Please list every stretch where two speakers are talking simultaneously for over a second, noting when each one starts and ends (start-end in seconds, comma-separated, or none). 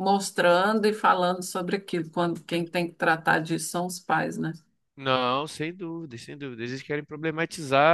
none